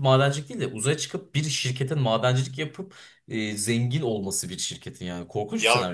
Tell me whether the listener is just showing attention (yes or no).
no